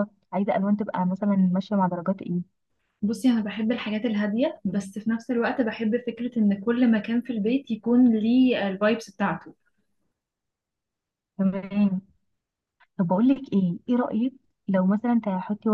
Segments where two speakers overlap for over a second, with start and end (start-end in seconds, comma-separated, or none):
none